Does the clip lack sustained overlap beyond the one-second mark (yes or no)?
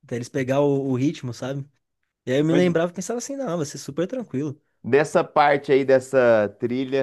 yes